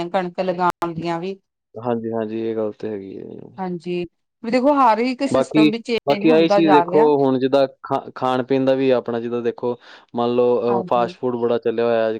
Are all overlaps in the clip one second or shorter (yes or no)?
yes